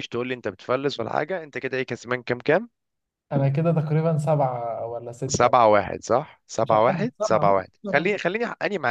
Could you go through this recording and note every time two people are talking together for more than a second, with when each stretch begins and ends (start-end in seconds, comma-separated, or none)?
6.6-8.1